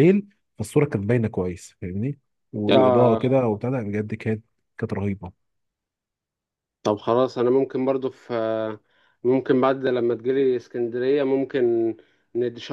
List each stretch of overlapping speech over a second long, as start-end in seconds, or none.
none